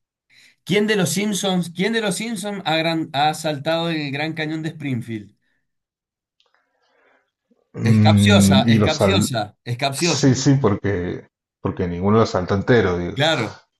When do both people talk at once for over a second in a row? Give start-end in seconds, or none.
7.8-9.3